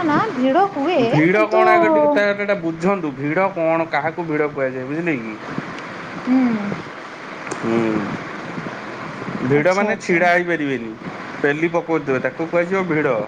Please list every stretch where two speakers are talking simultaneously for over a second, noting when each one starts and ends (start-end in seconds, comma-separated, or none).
none